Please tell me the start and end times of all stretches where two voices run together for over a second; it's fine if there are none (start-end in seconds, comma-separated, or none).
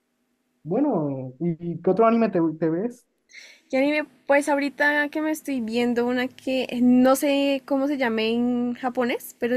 none